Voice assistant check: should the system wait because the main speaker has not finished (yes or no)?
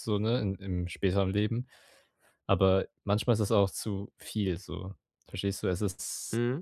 yes